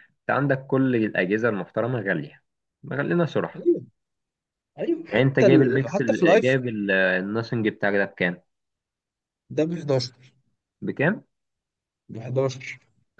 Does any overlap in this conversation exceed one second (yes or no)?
yes